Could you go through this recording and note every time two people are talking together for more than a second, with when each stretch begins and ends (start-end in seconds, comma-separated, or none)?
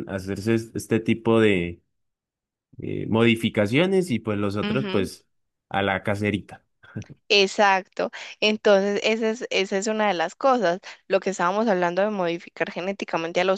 none